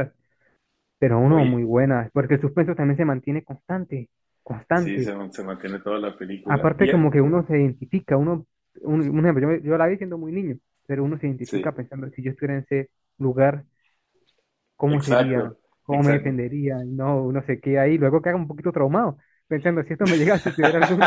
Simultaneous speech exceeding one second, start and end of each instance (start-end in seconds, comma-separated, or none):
14.9-16.4